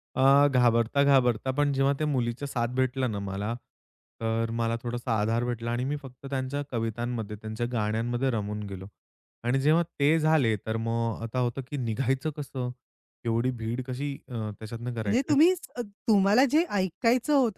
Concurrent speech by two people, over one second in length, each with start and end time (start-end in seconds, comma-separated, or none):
none